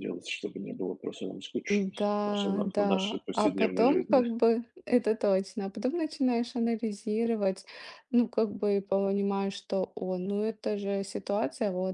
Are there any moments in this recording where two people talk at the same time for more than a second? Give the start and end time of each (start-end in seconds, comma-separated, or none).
1.7-4.2